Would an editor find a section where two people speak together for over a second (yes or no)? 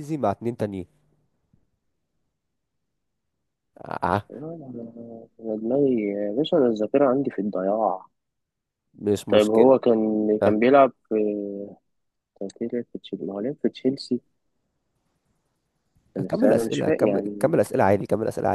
yes